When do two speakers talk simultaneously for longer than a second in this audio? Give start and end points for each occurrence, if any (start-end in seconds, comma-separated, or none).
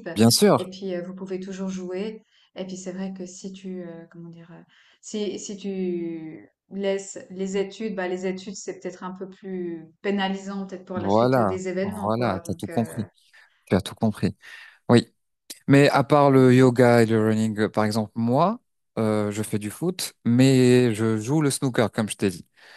10.9-13.0